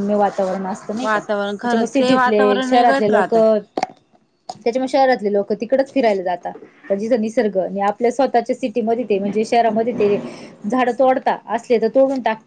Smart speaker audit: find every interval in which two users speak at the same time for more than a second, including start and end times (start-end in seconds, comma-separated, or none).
1.0-3.4